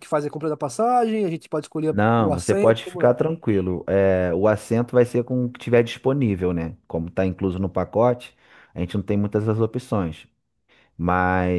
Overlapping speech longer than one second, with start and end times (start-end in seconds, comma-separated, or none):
1.9-3.1